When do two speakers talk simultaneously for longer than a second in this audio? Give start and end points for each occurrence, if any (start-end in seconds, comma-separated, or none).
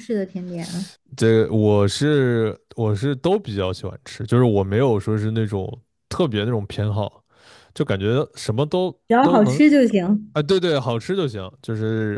none